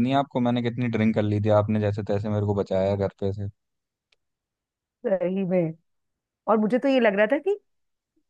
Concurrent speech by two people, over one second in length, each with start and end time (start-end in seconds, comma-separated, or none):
none